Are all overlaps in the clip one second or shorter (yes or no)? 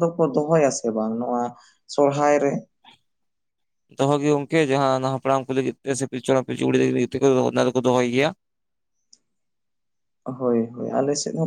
yes